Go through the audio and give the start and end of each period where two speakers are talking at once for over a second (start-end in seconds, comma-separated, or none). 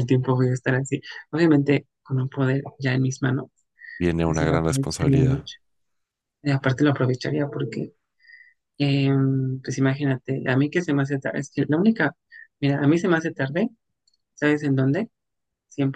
4.2-5.5